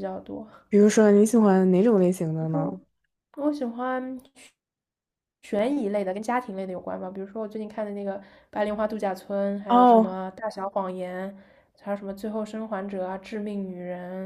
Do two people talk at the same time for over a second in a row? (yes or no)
no